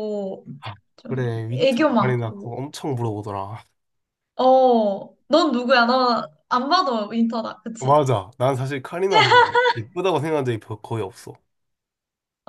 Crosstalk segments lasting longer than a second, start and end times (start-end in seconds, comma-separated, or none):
1.0-2.5